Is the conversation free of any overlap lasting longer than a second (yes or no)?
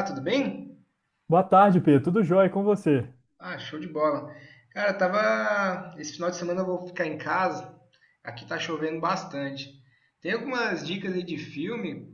yes